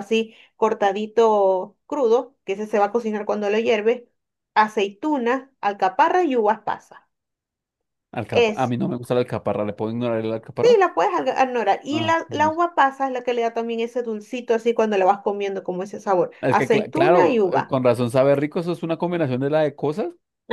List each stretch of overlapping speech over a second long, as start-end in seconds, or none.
16.4-17.8